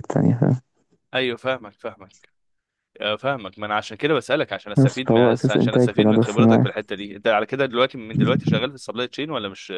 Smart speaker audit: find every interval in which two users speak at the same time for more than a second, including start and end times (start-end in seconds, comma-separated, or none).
4.8-6.7